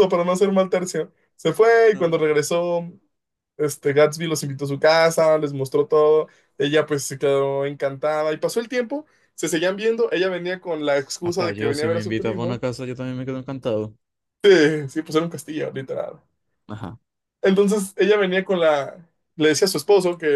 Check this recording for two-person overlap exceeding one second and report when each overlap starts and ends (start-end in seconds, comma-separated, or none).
11.2-12.6